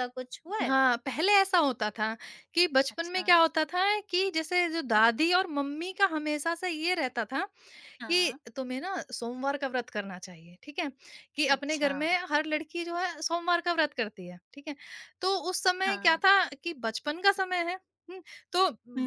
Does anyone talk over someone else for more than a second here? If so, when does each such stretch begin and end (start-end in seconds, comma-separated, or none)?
none